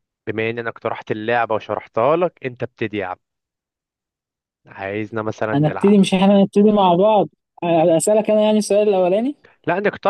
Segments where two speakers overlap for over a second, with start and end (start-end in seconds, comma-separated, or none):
none